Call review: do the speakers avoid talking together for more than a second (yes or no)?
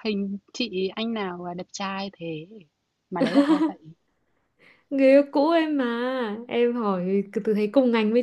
yes